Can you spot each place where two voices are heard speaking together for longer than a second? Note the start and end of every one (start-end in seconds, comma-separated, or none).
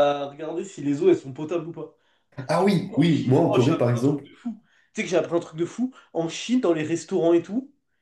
2.6-4.2